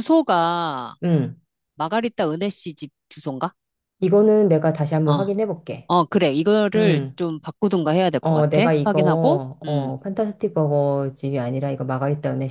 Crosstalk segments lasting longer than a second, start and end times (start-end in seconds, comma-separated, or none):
8.2-9.9